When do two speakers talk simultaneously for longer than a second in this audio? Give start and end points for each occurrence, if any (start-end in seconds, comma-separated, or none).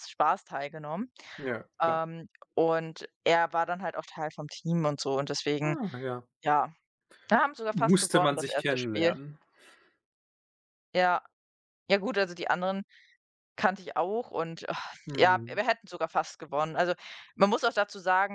7.7-9.1